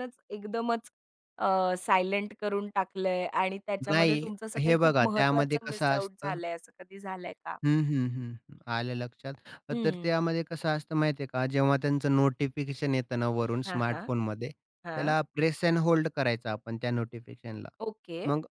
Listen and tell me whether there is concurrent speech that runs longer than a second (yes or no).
yes